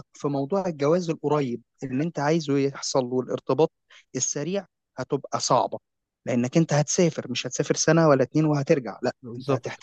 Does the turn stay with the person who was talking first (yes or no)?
yes